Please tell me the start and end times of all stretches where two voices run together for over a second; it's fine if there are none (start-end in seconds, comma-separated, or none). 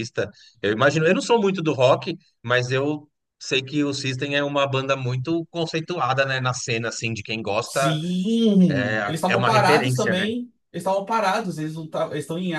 8.7-10.3